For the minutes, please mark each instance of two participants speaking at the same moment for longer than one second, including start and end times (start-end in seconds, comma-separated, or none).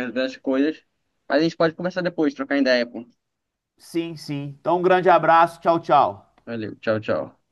none